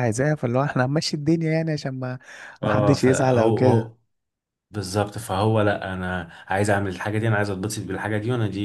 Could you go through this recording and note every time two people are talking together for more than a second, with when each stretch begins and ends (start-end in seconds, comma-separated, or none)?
2.6-3.9